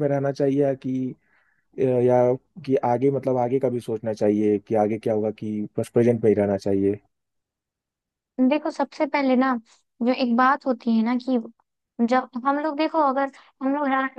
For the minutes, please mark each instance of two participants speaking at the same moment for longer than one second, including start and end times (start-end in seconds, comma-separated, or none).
none